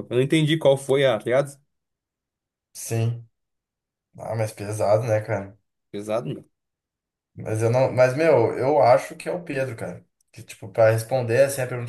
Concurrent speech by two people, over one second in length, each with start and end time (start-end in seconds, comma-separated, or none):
none